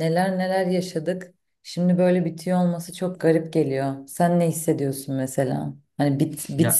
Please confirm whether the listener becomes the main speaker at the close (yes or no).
no